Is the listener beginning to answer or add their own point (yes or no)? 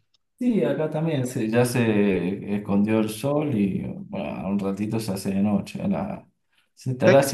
no